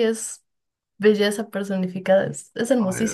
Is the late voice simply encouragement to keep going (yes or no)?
no